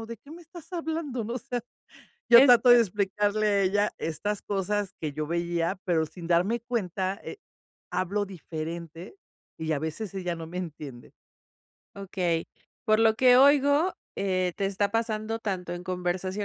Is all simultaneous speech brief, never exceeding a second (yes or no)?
yes